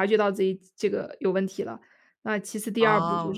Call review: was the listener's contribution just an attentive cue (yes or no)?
yes